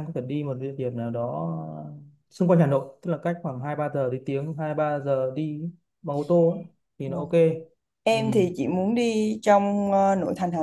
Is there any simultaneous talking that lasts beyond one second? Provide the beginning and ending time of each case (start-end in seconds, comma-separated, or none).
none